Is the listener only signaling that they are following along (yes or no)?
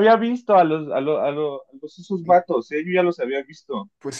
no